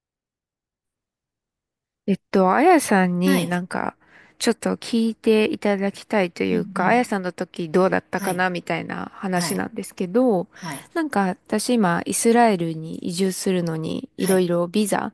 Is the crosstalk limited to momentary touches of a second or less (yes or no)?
yes